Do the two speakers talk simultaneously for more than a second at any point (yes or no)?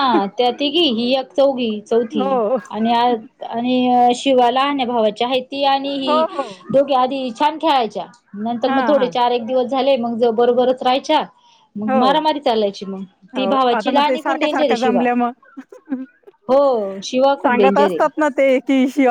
yes